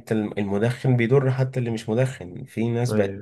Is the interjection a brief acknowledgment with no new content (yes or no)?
yes